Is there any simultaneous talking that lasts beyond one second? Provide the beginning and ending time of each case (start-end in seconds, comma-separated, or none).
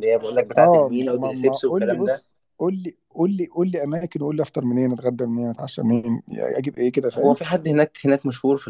0.6-2.2